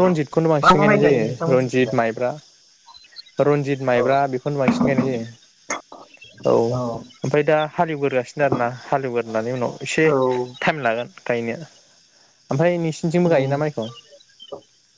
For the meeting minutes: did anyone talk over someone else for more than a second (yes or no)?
yes